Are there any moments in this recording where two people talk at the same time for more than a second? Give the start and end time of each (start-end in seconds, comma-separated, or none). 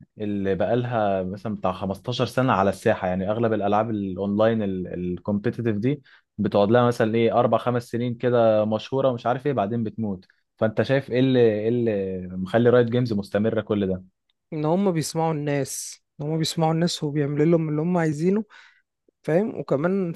none